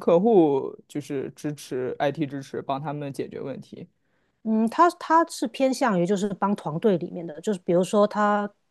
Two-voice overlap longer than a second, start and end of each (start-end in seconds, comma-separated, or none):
none